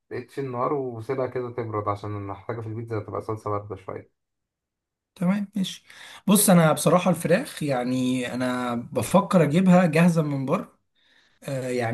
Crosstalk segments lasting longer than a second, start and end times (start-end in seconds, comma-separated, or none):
none